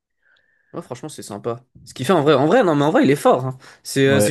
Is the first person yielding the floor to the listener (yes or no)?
no